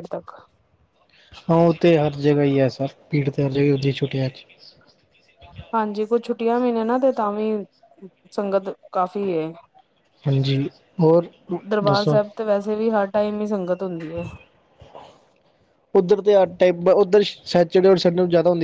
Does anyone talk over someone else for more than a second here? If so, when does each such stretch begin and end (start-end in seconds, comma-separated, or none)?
none